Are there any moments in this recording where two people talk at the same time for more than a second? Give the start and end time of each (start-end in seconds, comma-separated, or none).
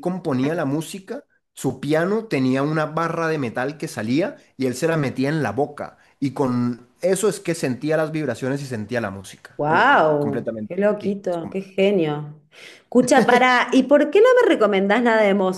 9.6-11.6